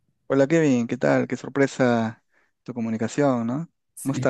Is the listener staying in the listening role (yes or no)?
no